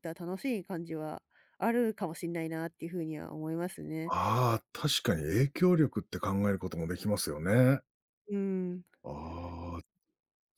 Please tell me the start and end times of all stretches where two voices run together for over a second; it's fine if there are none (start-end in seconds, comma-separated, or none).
none